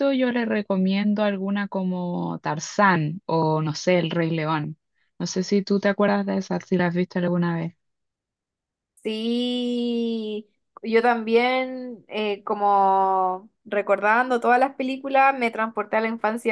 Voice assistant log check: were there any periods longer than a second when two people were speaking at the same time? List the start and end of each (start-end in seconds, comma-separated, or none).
none